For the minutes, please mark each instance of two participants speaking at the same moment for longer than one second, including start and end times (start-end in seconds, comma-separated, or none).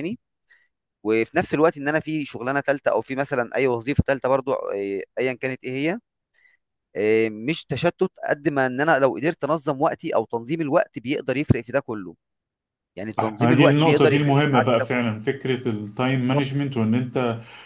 13.2-14.9